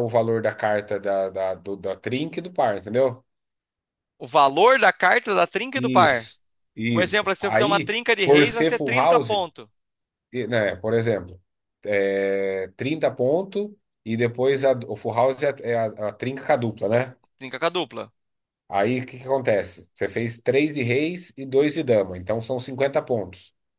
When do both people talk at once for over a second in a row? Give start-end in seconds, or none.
6.9-9.3